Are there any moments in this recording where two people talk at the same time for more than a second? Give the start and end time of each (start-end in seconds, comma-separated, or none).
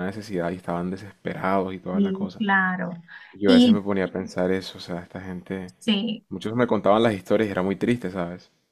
none